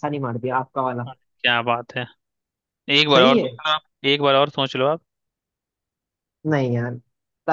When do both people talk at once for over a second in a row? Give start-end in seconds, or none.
none